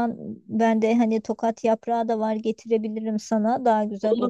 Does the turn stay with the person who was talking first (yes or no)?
no